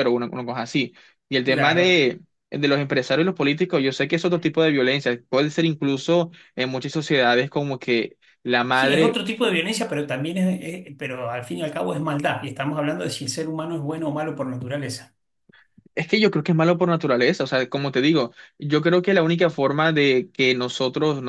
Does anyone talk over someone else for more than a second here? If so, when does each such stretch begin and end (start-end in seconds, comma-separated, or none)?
none